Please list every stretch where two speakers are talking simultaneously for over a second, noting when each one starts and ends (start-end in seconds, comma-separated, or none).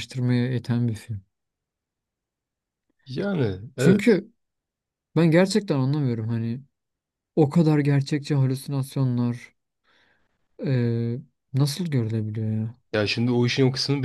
none